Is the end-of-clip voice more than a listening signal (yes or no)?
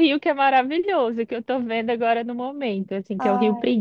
no